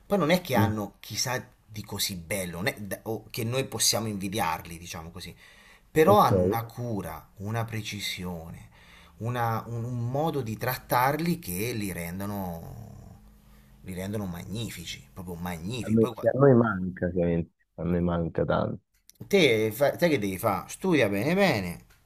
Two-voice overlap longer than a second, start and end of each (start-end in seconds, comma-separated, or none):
none